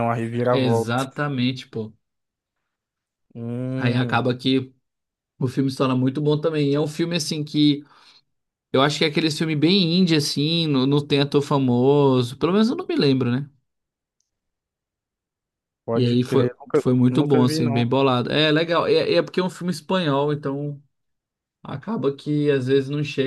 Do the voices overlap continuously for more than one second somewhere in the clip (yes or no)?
yes